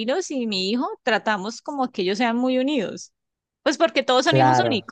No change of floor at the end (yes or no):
yes